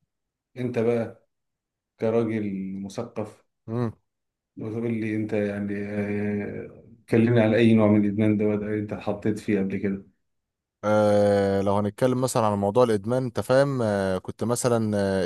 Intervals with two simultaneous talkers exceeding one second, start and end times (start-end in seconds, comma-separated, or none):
none